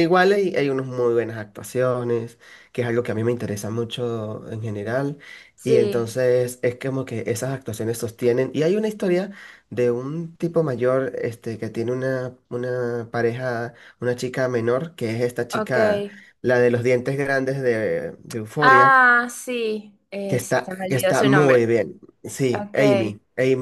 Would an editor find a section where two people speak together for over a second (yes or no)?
yes